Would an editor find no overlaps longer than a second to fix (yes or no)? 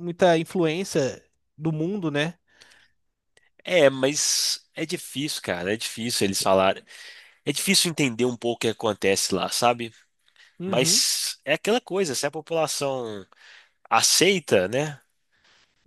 yes